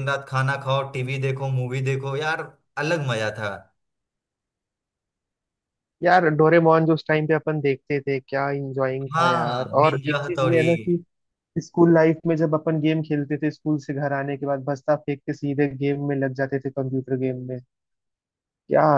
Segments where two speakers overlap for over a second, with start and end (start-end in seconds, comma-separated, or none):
9.2-10.6